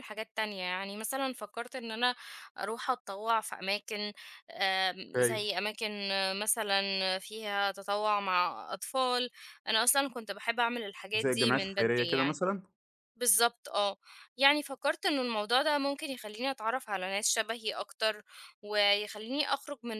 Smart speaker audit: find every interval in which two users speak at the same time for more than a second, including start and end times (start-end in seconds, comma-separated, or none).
11.2-12.4